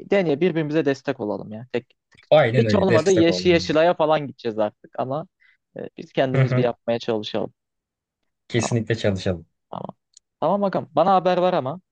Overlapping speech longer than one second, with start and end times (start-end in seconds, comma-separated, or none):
2.6-3.9